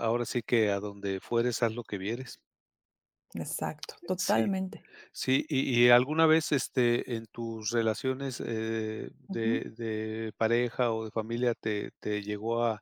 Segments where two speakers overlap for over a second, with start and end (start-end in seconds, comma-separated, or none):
none